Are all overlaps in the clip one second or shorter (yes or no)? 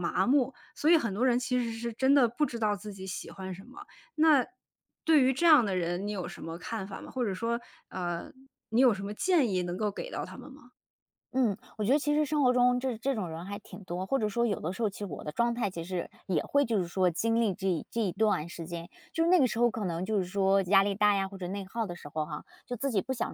yes